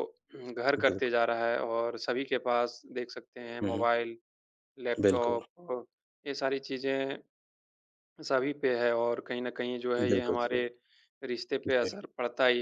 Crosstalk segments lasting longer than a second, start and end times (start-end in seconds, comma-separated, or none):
none